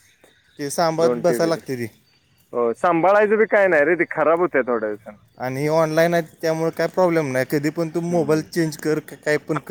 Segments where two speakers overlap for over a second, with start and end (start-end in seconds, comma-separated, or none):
none